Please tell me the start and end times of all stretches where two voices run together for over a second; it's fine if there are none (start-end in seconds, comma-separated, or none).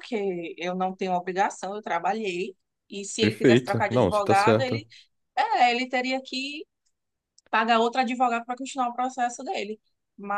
3.2-4.8